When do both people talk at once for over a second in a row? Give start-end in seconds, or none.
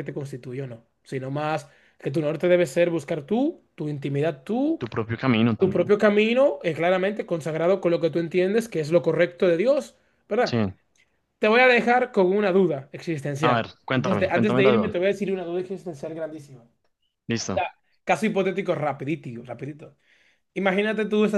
13.4-14.9